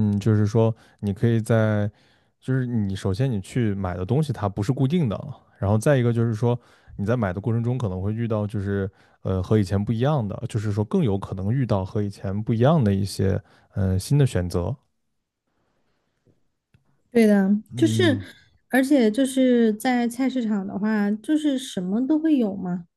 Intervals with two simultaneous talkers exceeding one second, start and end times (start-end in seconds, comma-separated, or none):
none